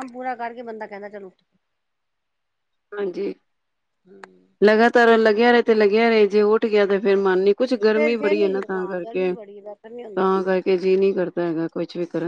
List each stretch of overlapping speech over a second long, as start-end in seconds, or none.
6.9-9.3